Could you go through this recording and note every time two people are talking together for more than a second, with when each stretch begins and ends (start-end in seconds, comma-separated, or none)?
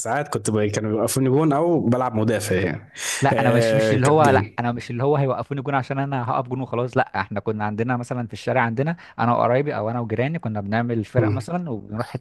3.3-4.6